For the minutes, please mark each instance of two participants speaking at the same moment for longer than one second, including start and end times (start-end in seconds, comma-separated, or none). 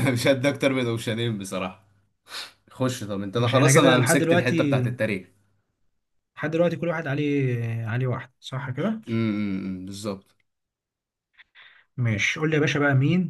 3.4-4.8